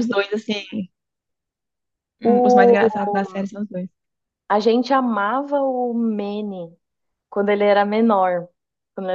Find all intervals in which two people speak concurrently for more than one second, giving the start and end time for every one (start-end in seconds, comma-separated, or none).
2.2-3.5